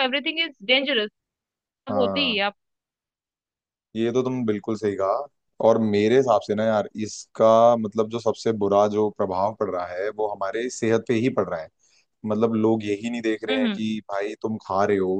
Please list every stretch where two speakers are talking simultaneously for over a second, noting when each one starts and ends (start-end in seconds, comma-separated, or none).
none